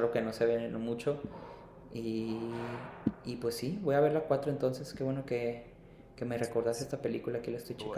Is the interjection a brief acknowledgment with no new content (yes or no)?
no